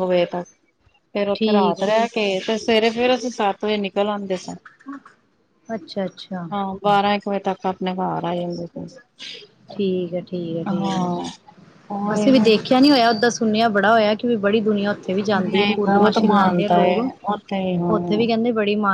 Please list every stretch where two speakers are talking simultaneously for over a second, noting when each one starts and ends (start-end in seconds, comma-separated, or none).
15.4-17.1